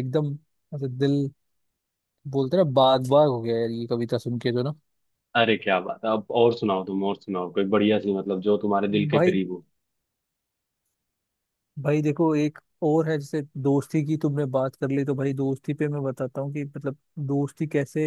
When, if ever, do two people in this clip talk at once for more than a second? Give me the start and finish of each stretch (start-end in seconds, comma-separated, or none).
none